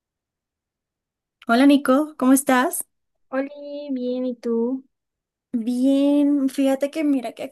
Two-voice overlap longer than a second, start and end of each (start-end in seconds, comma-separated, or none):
none